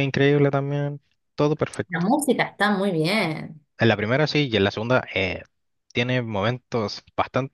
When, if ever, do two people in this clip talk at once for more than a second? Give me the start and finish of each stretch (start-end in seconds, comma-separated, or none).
none